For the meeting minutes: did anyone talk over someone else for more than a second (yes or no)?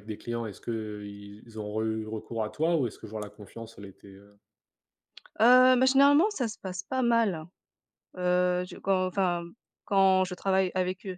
no